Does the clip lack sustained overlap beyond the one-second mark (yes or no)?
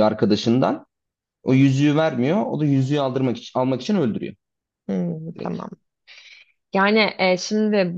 yes